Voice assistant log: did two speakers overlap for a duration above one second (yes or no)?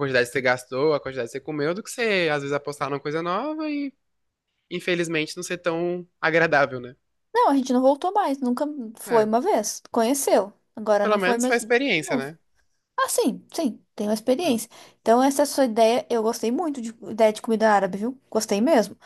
yes